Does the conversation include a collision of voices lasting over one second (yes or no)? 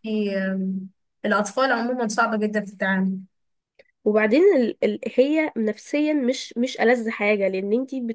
no